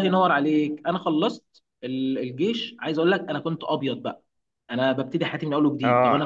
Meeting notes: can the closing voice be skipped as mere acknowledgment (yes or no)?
yes